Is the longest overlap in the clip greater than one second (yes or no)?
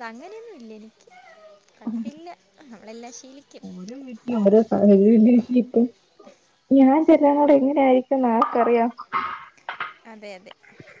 no